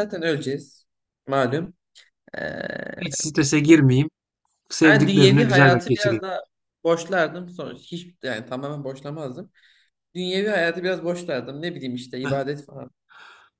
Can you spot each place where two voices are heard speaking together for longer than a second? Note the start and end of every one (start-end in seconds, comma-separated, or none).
4.8-6.2